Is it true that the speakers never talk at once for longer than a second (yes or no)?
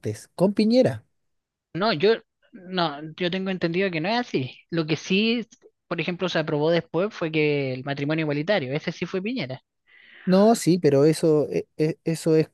yes